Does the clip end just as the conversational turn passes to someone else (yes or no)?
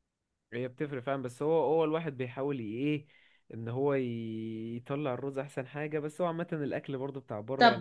yes